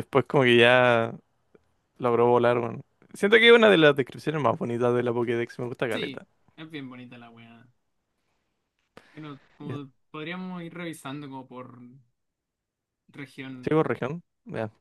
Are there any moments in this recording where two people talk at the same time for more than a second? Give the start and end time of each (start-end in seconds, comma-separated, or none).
none